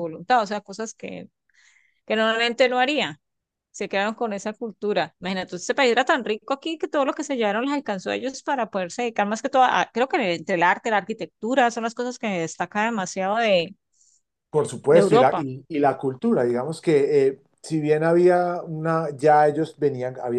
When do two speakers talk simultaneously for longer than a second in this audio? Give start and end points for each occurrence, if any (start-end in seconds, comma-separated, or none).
none